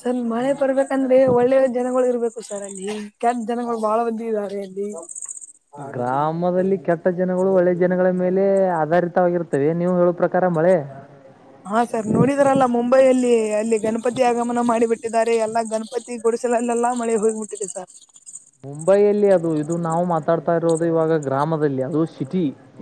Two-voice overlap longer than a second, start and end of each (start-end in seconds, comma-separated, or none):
none